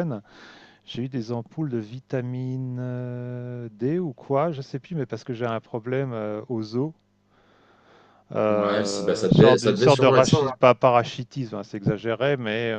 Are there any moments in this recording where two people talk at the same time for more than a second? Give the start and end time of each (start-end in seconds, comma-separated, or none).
8.5-10.5